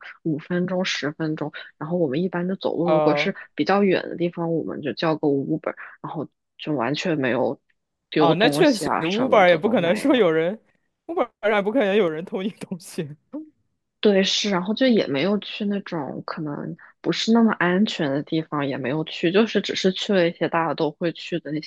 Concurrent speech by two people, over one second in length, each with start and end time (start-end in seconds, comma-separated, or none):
8.2-10.3